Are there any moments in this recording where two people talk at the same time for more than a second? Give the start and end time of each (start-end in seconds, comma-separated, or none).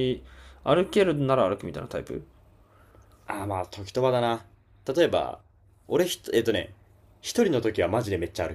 none